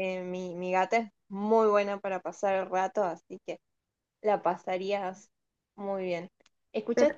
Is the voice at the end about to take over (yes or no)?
no